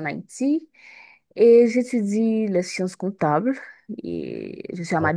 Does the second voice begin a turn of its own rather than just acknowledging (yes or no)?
no